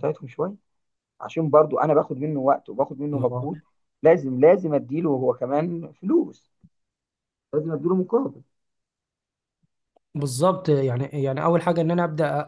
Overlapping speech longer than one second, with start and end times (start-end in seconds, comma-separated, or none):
none